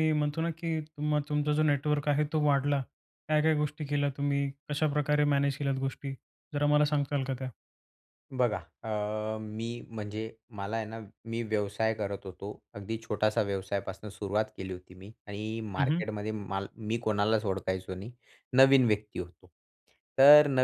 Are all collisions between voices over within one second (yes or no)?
yes